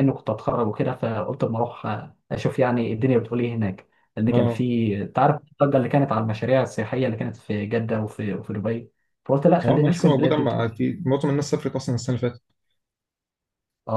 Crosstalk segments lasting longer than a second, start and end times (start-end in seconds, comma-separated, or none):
9.6-10.8